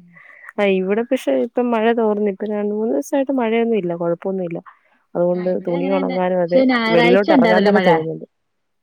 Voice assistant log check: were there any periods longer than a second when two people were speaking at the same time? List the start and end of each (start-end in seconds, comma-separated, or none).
5.3-7.9